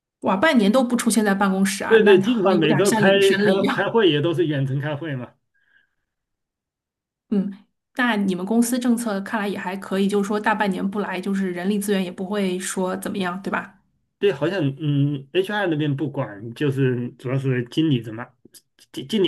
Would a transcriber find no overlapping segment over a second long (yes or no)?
no